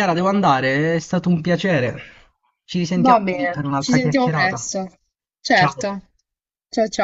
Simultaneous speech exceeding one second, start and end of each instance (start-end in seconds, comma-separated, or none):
3.0-4.7